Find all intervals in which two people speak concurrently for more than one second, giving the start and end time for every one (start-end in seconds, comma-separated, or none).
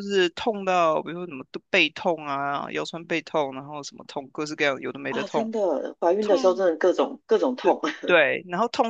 none